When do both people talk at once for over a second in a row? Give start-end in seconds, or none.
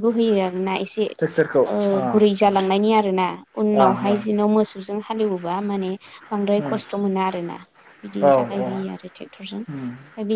none